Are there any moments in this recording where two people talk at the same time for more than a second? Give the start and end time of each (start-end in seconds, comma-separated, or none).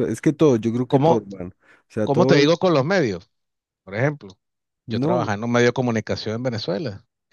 none